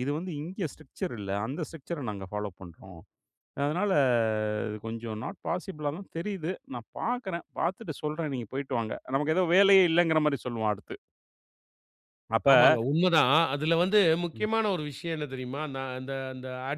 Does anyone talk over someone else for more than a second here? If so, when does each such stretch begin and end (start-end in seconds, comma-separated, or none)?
none